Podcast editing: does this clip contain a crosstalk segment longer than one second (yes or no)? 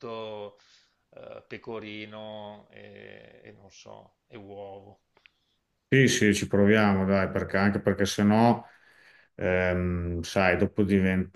no